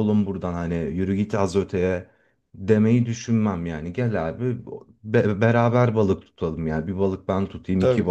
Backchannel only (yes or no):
yes